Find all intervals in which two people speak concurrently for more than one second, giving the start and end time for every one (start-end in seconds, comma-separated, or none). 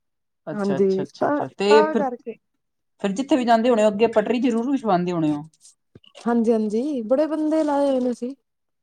0.5-2.0